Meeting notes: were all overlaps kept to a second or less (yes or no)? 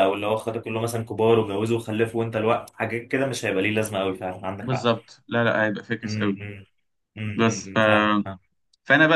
yes